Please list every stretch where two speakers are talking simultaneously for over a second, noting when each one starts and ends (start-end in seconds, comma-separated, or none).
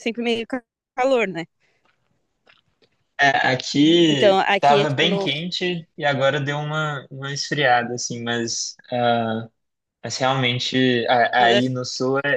4.1-5.3